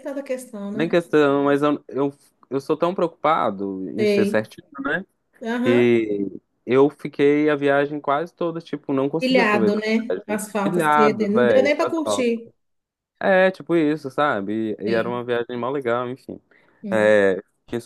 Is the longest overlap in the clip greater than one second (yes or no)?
yes